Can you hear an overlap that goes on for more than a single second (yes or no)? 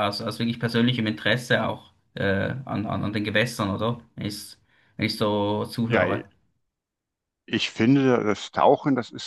no